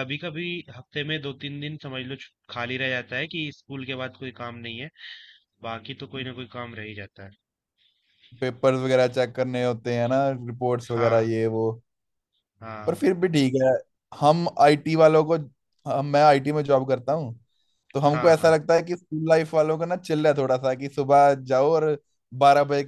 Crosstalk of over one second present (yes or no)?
no